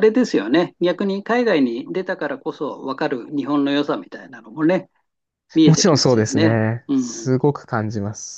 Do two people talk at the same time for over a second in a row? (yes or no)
yes